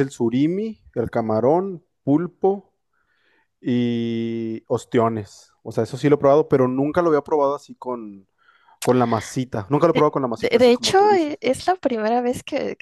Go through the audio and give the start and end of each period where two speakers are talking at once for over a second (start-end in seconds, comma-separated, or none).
9.9-11.4